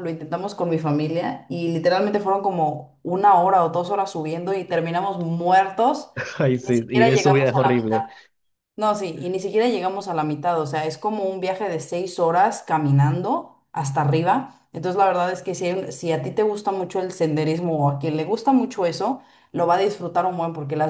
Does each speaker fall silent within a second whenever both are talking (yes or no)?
no